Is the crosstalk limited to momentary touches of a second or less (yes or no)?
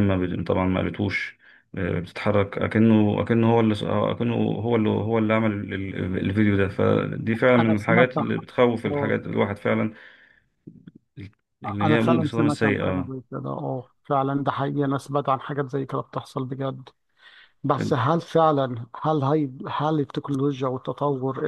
no